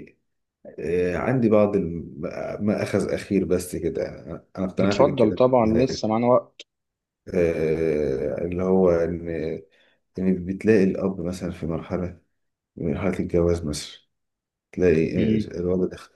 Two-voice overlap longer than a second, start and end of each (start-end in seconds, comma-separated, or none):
4.8-6.2